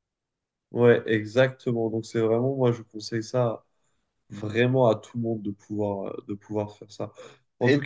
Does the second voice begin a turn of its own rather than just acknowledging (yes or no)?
no